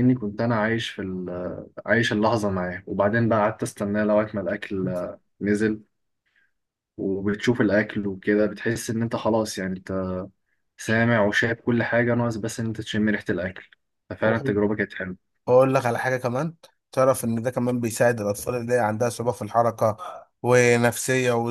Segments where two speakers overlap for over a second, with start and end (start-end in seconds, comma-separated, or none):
none